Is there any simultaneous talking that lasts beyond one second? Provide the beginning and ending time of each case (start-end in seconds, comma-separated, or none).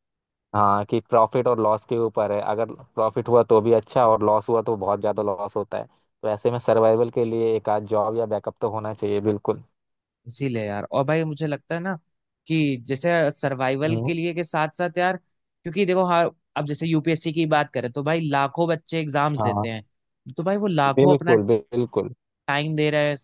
none